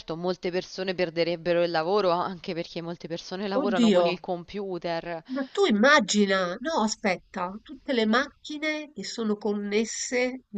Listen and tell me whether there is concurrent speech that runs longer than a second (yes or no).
no